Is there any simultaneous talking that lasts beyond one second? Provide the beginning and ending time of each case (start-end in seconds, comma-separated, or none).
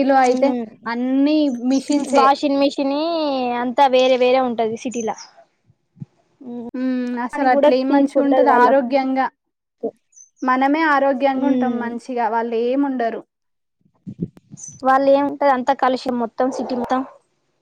7.3-8.9